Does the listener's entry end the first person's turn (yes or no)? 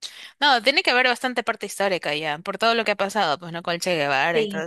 yes